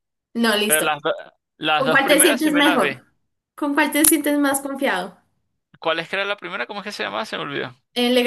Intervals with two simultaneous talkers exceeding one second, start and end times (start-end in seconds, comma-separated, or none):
1.7-3.0